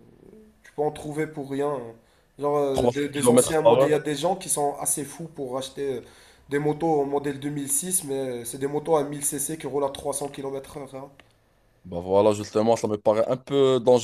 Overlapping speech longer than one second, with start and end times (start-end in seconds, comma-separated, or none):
2.7-4.0